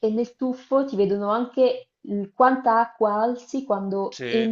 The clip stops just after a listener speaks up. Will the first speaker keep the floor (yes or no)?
yes